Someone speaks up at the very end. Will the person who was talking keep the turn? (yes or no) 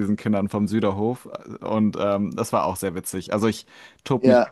yes